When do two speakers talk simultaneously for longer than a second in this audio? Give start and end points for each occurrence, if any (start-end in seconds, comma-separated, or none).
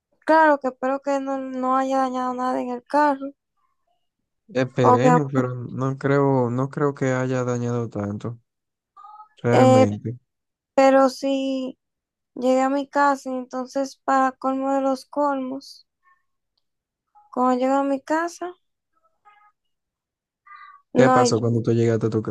none